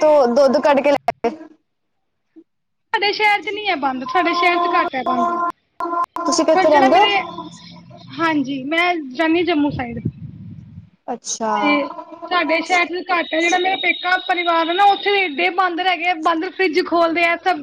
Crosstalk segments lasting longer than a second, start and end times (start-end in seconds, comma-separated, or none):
none